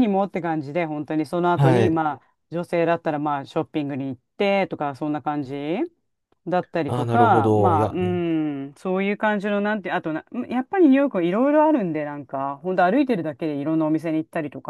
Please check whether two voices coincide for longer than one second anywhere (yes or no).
yes